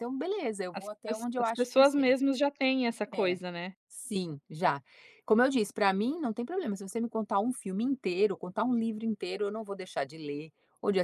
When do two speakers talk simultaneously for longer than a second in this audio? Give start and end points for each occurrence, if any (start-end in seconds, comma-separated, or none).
0.7-2.1